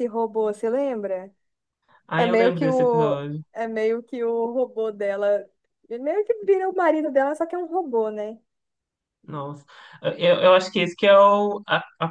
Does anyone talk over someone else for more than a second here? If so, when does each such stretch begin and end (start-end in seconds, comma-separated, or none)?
2.1-3.4